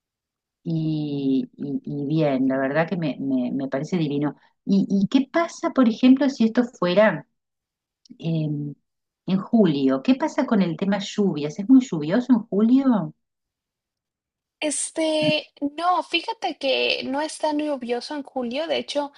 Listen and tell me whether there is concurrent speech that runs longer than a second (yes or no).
no